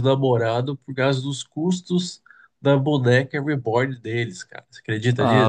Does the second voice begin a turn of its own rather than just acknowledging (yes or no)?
yes